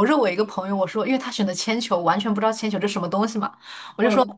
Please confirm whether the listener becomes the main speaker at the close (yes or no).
no